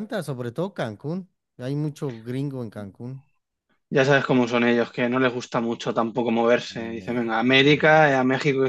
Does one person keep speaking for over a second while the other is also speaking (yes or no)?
yes